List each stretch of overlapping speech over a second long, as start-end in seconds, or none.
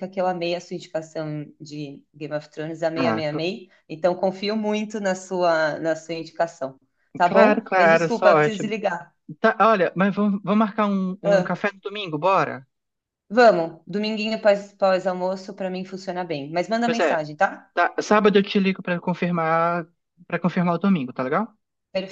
7.2-8.6